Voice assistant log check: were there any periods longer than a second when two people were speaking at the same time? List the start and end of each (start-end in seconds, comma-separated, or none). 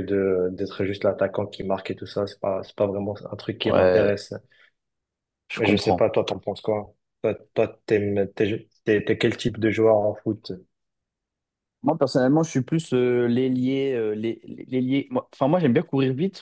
none